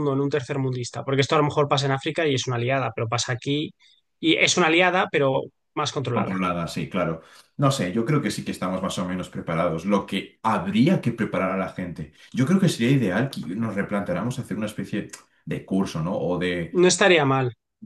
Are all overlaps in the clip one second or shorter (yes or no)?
yes